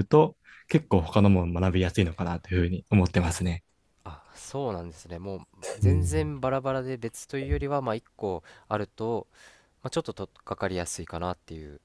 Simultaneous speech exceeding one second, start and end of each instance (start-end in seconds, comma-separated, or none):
none